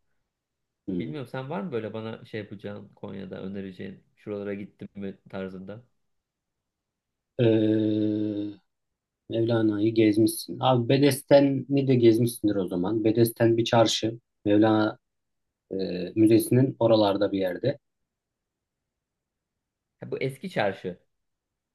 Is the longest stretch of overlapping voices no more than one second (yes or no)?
yes